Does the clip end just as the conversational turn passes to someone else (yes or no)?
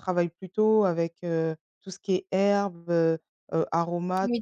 no